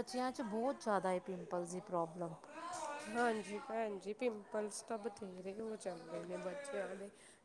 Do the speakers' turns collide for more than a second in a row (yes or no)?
no